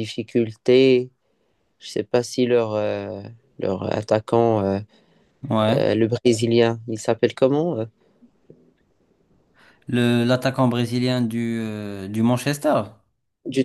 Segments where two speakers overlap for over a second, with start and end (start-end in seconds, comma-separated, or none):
none